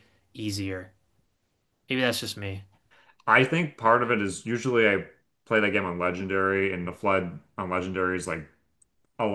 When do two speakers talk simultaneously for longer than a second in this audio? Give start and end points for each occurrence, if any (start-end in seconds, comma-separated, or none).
none